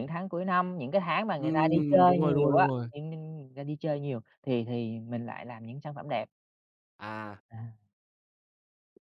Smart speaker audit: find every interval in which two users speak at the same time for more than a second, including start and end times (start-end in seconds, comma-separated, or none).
1.4-2.9